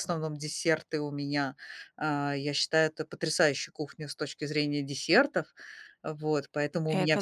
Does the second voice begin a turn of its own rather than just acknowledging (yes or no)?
no